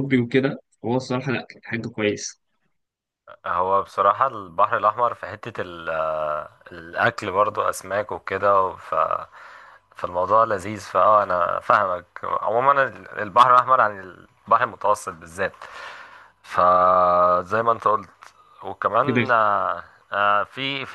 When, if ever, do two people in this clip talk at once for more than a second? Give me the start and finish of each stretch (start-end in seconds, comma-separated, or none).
none